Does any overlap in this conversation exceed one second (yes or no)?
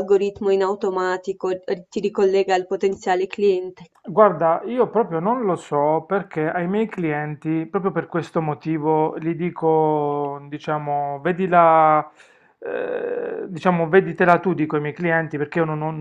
no